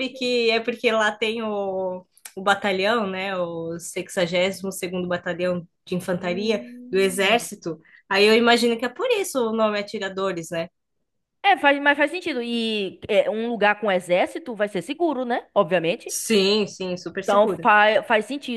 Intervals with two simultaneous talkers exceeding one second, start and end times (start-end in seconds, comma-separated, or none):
6.2-7.5